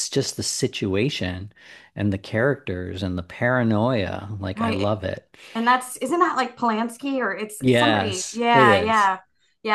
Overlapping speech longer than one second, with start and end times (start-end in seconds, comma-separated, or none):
7.6-9.1